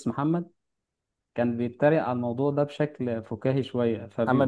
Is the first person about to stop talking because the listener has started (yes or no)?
no